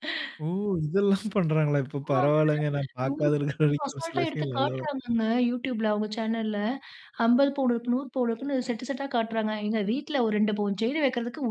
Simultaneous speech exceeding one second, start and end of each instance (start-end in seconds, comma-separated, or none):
3.1-4.8